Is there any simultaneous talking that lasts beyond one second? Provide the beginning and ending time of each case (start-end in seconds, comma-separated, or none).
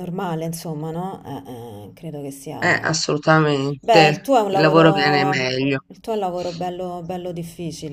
3.8-5.8